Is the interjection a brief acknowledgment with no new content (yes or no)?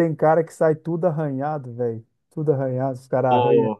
yes